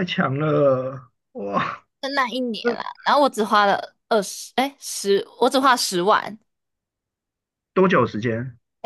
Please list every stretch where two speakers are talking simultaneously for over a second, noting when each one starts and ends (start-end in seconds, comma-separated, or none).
none